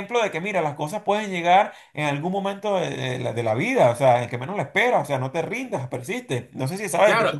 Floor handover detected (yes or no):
yes